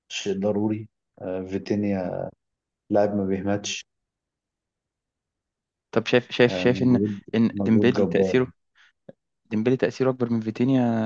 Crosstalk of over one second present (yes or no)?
yes